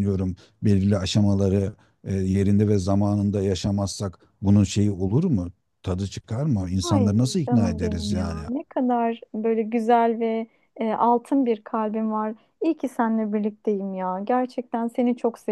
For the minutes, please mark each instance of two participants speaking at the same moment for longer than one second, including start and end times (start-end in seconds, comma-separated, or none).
6.8-8.4